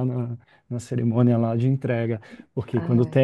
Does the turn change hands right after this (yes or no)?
no